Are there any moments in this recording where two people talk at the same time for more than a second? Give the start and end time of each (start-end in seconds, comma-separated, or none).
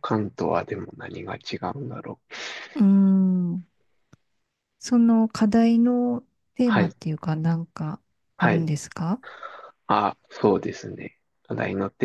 none